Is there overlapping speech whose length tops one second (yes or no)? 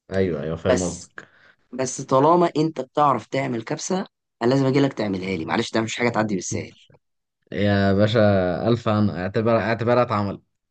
no